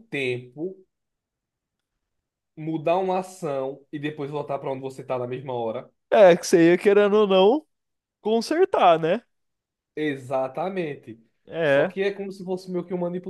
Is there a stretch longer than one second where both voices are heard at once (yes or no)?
no